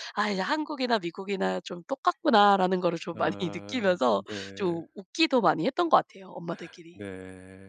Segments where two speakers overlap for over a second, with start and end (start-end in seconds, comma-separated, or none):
3.1-4.8